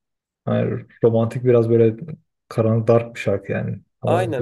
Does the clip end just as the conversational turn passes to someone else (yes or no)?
yes